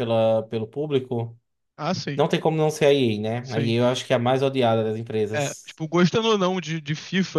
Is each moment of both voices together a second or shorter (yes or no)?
yes